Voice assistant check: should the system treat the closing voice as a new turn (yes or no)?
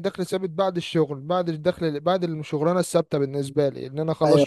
yes